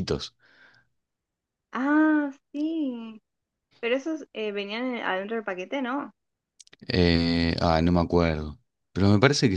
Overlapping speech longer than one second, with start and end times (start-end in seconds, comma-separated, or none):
none